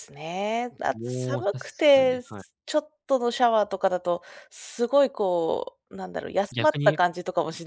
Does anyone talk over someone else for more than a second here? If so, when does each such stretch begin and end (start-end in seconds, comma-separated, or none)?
0.9-2.4